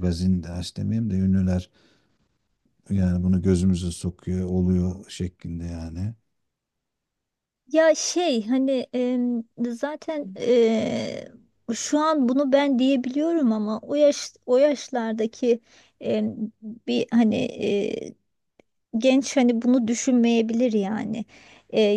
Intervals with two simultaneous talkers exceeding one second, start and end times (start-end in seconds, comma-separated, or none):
none